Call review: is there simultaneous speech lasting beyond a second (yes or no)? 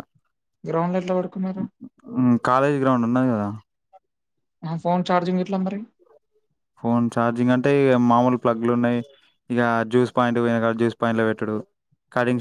no